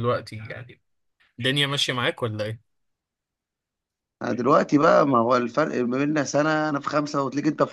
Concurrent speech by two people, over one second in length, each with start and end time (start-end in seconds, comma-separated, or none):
none